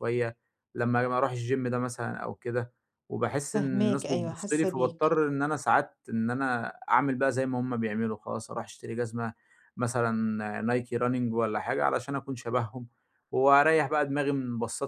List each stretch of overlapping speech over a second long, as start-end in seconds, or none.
3.5-5.1